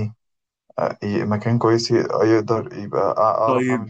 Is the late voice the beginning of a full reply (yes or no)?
yes